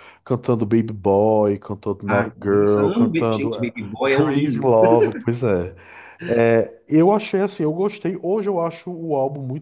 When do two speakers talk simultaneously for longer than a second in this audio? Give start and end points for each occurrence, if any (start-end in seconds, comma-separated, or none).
2.1-4.7